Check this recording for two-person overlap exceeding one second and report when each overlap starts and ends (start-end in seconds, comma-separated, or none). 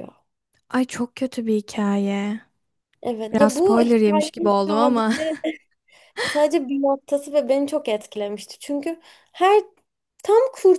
3.3-5.1